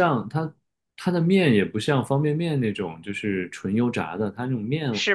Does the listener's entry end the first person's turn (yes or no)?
no